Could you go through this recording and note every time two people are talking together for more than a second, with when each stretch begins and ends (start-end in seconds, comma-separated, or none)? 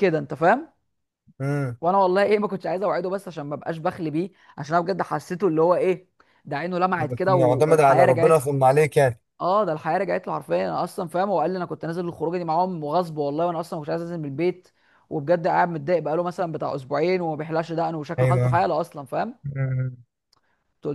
6.9-8.4